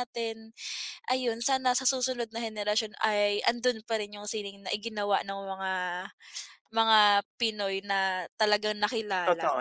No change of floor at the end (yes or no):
no